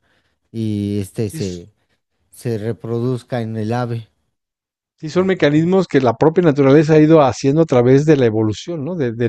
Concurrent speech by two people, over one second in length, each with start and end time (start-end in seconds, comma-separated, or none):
none